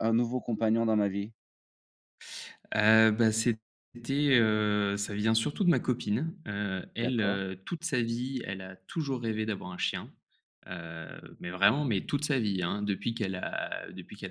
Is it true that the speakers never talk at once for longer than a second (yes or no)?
yes